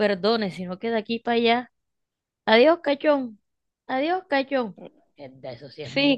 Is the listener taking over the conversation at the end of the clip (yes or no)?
yes